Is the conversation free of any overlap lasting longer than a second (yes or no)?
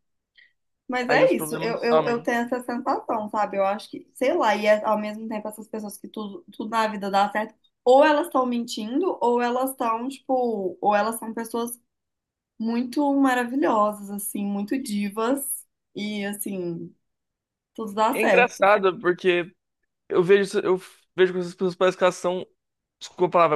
no